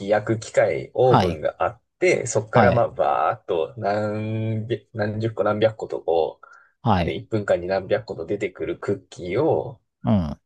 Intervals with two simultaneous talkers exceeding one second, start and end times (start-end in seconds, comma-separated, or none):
none